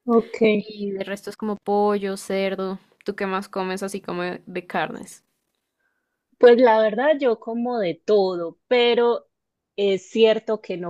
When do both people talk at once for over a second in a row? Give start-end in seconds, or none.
none